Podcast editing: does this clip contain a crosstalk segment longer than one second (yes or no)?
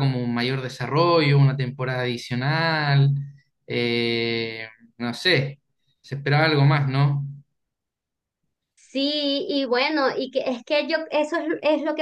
no